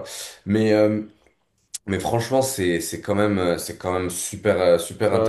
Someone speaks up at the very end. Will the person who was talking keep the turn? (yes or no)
yes